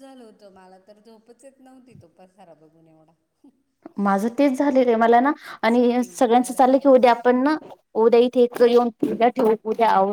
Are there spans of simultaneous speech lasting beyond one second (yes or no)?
yes